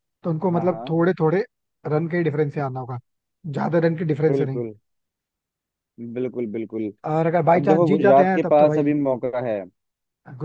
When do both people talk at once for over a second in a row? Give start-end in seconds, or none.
7.5-8.9